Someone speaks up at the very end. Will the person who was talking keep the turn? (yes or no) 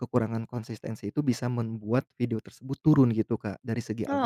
yes